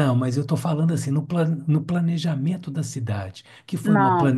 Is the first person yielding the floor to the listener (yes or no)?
no